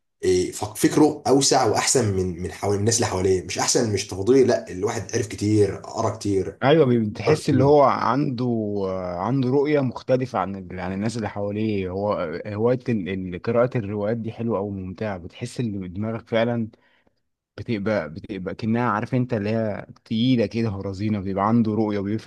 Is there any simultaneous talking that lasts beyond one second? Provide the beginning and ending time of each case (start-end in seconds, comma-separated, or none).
none